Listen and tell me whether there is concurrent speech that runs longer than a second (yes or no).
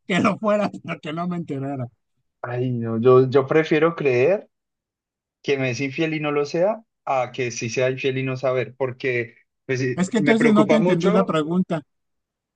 yes